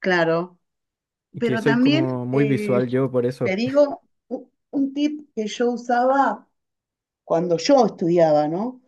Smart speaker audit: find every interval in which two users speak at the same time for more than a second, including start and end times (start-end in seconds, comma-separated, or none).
1.4-2.8